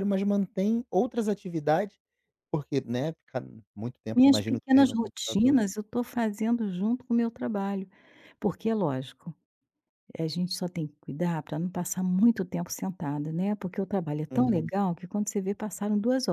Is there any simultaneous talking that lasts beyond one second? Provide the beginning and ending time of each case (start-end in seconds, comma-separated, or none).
4.1-5.6